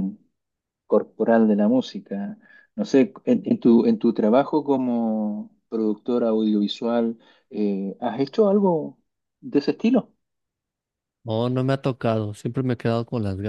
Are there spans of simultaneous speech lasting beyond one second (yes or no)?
no